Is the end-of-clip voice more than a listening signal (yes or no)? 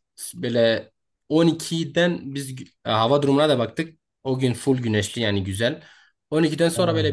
no